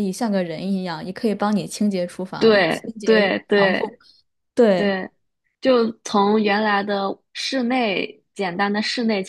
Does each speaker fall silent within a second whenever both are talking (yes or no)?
no